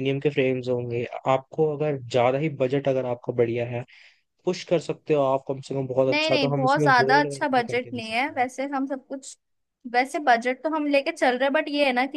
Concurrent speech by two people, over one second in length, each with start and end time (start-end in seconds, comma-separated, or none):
6.1-8.4